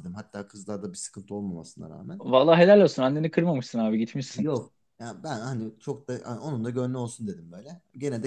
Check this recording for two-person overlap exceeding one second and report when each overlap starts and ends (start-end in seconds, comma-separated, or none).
none